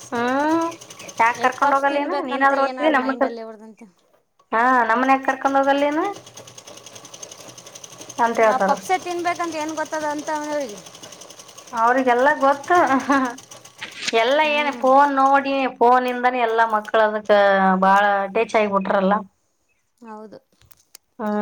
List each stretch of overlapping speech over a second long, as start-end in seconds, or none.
1.6-3.5